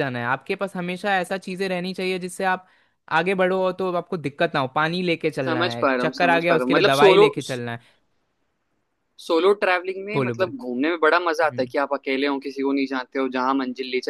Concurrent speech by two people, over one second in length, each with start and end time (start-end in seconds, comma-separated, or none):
5.4-7.3